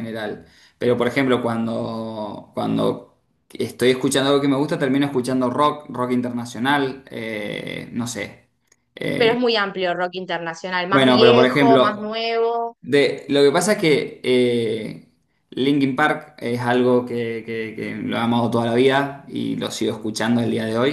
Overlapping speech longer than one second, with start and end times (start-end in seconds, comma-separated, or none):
10.9-12.2